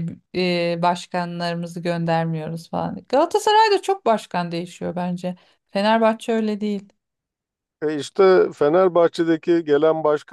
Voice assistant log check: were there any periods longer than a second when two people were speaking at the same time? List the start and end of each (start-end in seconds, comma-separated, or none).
none